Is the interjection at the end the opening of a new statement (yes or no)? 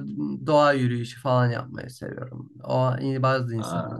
no